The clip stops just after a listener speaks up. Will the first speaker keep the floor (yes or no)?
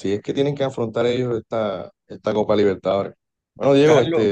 yes